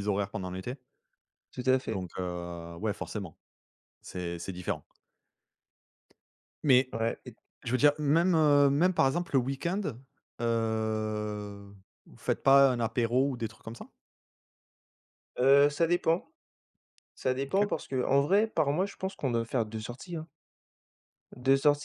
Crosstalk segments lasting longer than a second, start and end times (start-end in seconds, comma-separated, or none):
none